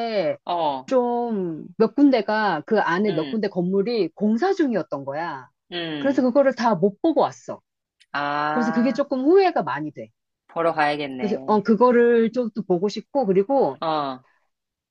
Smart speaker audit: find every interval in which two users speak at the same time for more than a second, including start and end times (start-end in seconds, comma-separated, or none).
none